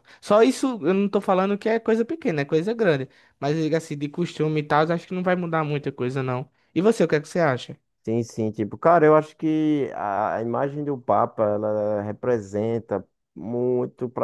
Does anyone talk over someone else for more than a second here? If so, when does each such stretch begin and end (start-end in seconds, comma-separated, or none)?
none